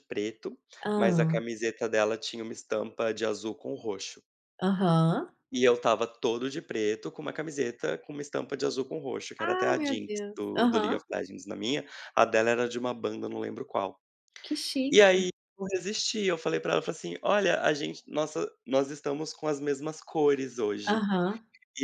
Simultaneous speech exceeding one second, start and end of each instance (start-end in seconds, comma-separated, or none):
9.4-11.0